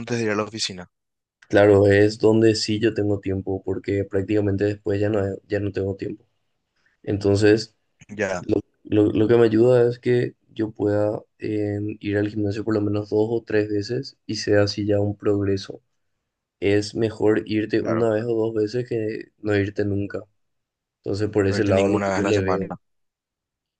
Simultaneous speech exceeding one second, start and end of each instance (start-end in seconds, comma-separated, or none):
21.5-22.7